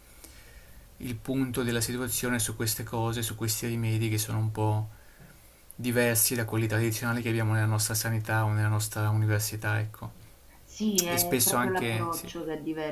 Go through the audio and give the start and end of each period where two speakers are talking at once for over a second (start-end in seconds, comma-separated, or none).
11.1-12.3